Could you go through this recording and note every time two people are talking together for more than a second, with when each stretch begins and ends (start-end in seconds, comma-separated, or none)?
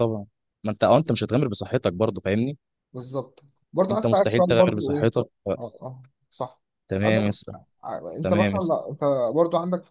3.9-5.1